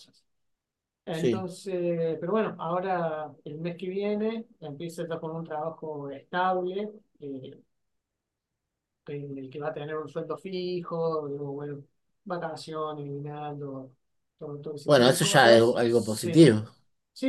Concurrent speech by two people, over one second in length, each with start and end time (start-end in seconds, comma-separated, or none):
14.8-16.6